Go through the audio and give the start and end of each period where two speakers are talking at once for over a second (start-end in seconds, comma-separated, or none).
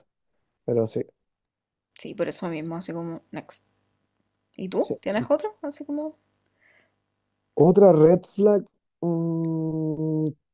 none